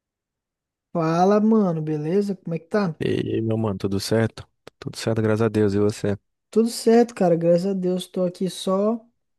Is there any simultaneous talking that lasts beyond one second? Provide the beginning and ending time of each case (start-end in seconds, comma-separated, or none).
none